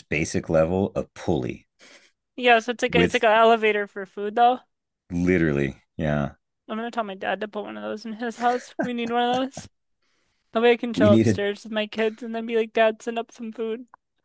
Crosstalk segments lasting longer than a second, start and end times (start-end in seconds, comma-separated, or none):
none